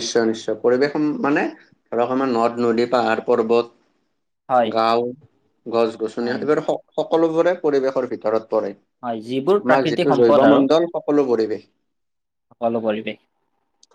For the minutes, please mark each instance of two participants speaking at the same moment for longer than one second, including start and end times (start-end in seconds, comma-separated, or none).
9.0-10.6